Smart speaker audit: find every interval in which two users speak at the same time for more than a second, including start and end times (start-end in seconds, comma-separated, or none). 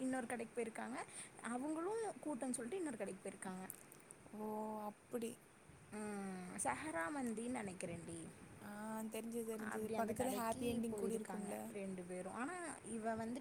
9.7-11.6